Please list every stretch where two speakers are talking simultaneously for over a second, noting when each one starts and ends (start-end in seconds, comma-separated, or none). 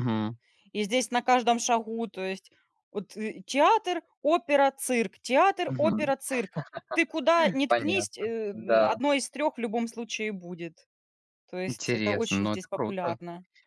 7.7-9.0, 11.7-13.2